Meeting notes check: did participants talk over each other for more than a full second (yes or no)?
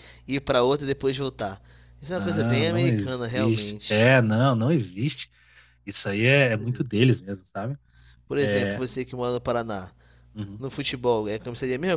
yes